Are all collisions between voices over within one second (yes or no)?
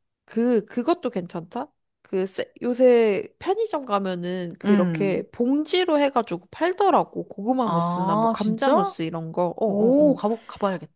no